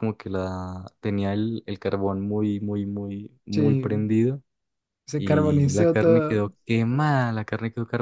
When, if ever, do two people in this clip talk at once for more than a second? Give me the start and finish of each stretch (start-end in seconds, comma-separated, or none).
5.2-6.5